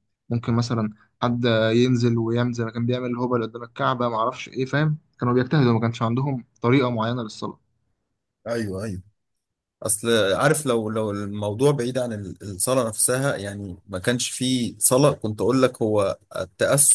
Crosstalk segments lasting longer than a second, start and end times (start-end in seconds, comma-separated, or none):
none